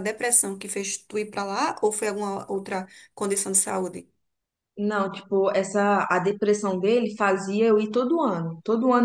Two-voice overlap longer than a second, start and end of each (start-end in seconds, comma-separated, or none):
none